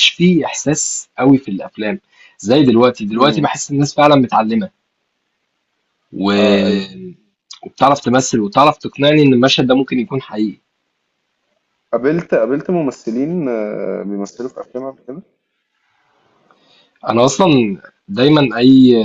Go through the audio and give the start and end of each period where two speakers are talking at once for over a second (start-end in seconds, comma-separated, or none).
none